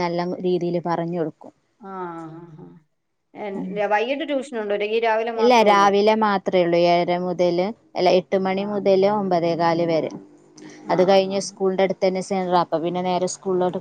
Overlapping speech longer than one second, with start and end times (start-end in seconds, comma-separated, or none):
none